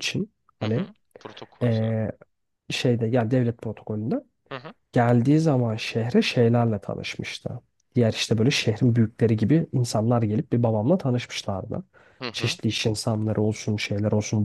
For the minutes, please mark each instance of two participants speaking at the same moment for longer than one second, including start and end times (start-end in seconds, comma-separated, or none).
none